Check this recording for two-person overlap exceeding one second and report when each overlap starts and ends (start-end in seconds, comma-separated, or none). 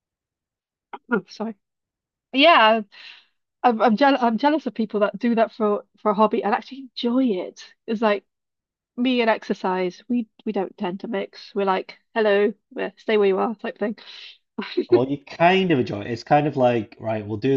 none